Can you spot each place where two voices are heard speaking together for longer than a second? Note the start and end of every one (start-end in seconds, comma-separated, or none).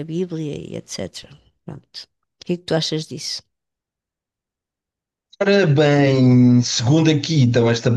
none